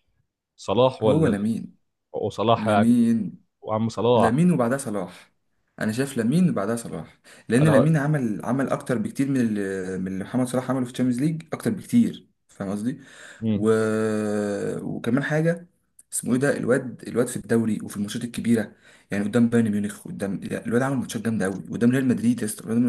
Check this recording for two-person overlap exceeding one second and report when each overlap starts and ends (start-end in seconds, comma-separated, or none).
none